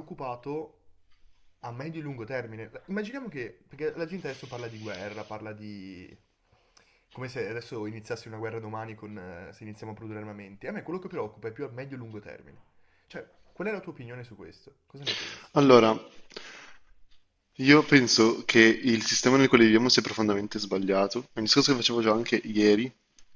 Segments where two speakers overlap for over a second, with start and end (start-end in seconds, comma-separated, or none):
none